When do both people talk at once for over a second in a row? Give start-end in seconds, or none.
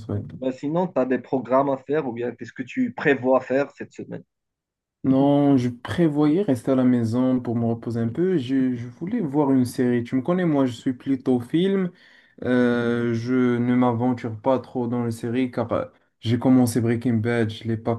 none